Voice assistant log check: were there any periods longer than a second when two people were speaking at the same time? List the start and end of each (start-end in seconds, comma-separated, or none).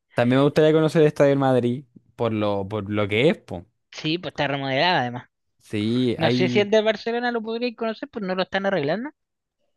none